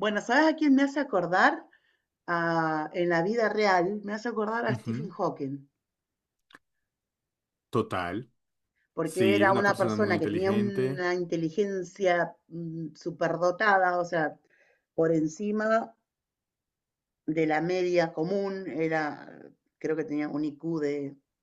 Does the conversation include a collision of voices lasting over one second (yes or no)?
yes